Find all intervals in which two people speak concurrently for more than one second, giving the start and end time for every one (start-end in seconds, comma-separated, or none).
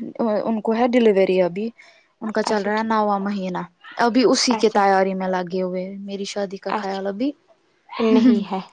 none